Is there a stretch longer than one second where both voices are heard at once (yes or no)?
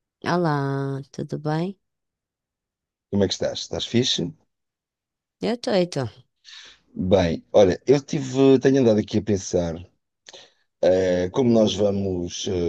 no